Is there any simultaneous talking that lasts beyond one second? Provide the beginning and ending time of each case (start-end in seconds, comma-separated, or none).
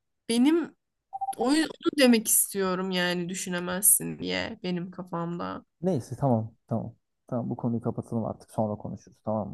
none